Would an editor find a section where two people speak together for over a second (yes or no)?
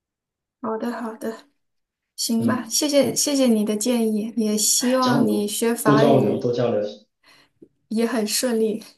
yes